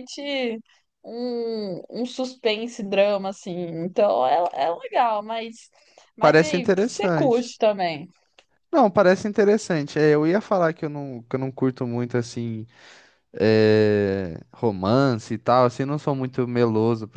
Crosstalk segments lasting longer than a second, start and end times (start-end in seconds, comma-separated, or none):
6.2-7.4